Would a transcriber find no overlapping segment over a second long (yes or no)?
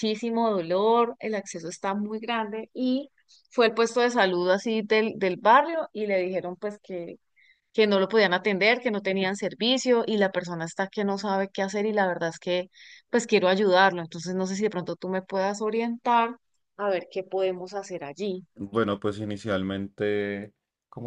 yes